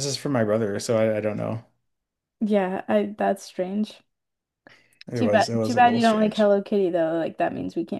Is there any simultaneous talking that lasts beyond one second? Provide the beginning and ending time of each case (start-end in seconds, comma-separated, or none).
5.2-6.5